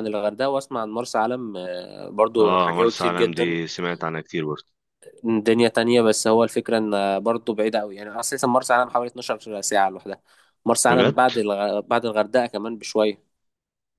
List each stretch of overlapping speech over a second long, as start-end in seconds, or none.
2.4-3.6